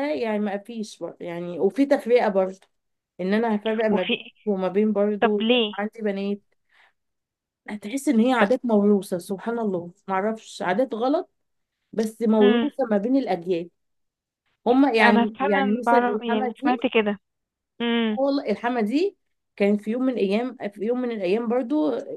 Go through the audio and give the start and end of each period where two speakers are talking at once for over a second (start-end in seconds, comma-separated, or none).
15.0-16.9